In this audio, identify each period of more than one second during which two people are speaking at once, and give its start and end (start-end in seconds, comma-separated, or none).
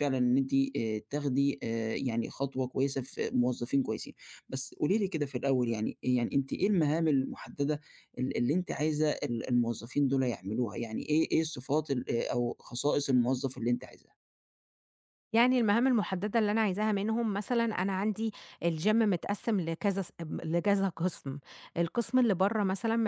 none